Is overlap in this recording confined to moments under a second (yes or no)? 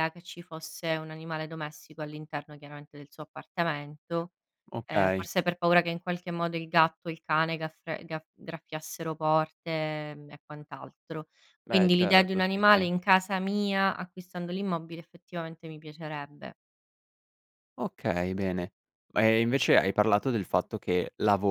no